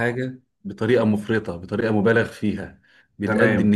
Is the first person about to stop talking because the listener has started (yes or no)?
no